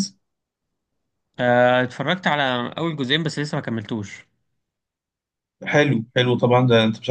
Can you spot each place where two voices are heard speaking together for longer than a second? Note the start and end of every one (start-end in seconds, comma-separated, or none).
none